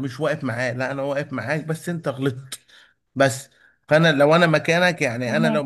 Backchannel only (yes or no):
yes